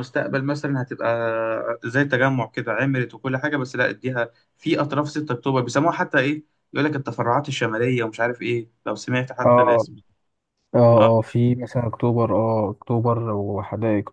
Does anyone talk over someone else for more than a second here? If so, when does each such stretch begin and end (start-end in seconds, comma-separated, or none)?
none